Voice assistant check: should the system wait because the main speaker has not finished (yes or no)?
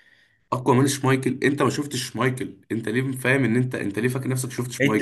no